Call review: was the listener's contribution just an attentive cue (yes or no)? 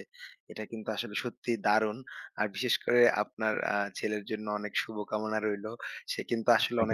yes